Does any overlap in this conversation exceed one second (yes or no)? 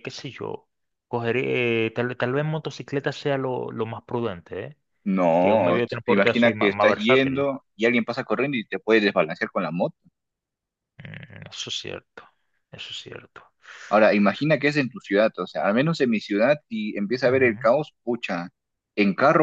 yes